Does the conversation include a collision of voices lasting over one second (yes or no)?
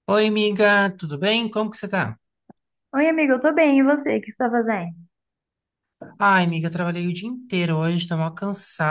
no